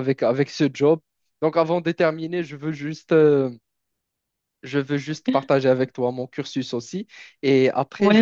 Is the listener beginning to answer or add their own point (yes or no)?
no